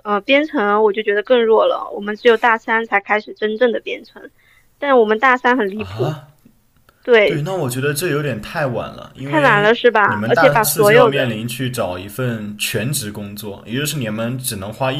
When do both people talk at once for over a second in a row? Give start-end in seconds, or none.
9.2-11.3